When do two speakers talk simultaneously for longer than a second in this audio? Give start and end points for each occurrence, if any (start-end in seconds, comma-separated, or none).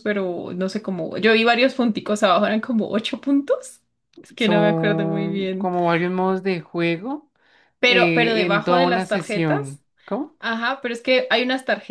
4.4-5.7, 7.9-9.8